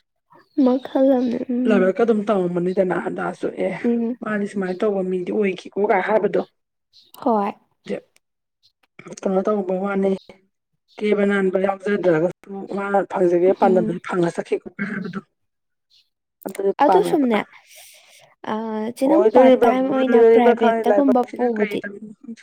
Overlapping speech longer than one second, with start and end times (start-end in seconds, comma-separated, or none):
19.1-21.8